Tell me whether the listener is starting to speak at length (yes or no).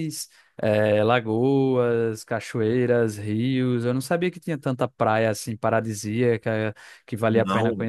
yes